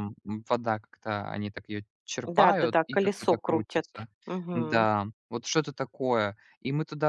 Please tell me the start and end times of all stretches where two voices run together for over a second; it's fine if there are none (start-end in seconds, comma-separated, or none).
2.4-3.9